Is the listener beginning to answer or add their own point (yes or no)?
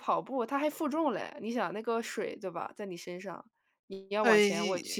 no